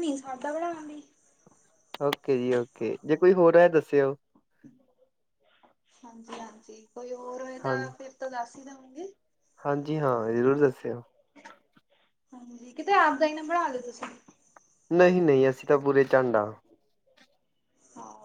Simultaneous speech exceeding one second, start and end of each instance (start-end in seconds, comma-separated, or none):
none